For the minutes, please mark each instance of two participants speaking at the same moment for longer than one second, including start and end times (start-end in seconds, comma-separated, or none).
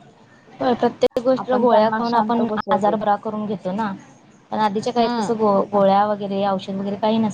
1.4-3.0